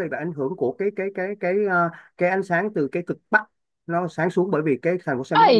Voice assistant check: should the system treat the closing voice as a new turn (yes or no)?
yes